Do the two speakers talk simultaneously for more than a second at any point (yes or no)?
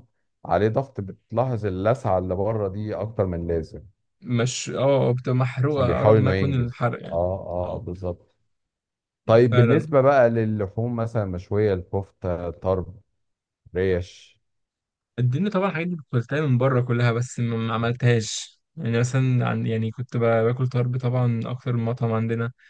yes